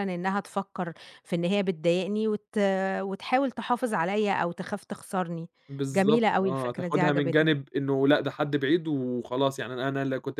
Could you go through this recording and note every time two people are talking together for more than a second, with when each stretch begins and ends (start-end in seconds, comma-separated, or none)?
5.9-7.5